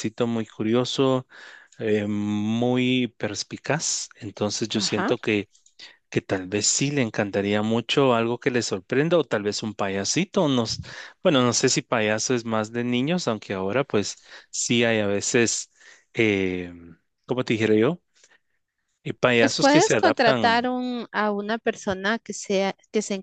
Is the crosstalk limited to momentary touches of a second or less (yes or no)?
no